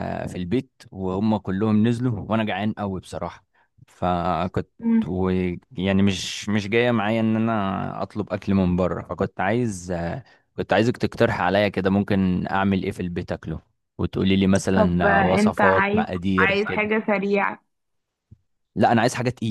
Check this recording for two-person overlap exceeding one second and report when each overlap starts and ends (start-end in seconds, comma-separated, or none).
14.7-16.9